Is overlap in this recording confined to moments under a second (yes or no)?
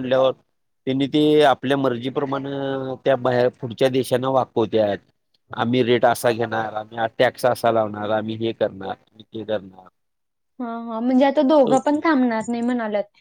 yes